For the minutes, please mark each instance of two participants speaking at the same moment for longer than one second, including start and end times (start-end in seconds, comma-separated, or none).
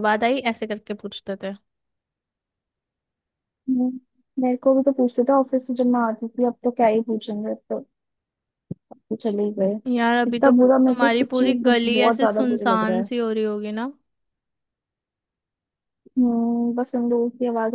10.3-13.1